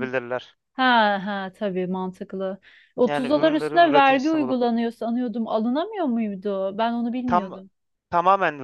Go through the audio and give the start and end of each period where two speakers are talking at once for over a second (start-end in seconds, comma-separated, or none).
3.0-4.6